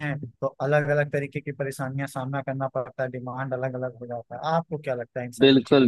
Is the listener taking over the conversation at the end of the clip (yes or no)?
yes